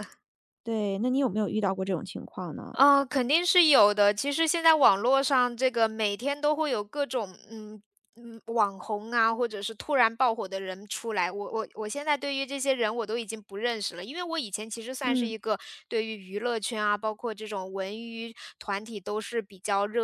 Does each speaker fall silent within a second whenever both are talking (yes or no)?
yes